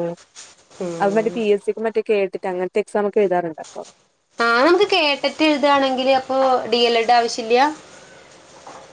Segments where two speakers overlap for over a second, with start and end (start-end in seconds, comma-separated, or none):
none